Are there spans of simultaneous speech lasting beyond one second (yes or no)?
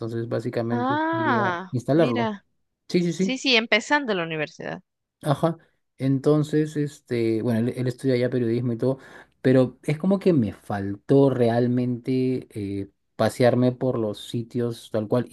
yes